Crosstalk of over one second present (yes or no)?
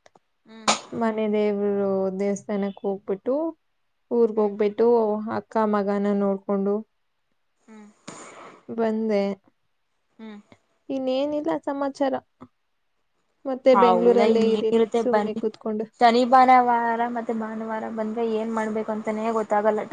yes